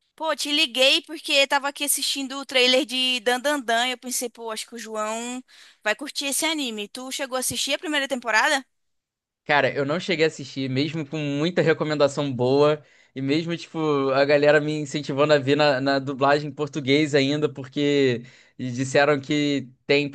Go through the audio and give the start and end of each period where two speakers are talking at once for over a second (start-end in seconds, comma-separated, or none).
none